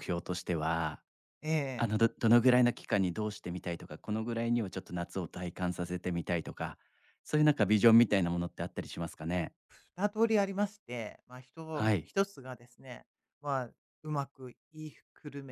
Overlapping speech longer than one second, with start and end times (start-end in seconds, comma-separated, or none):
none